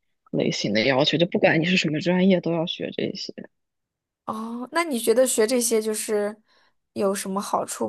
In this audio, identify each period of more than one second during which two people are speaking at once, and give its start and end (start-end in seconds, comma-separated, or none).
none